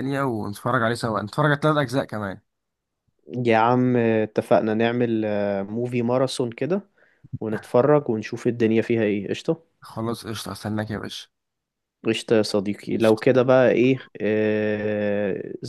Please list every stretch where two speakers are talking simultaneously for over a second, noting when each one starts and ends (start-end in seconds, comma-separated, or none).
none